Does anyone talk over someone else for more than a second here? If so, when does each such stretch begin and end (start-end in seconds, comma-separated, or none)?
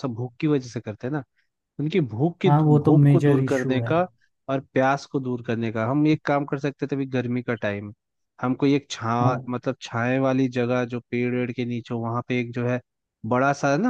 2.5-3.9